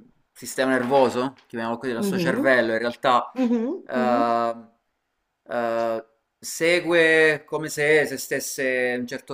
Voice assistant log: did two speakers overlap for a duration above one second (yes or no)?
no